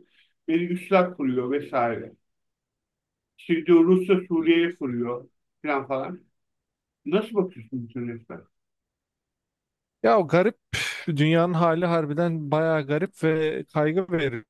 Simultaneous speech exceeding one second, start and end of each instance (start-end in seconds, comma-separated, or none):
none